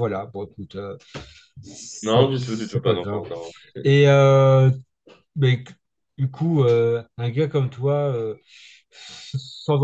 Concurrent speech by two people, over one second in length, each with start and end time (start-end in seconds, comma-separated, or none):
2.0-3.2